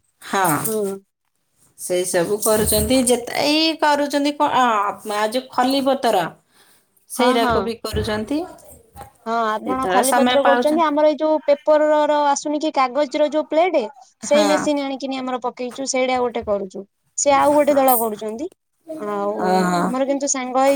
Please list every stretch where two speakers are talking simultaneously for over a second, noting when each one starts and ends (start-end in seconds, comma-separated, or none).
none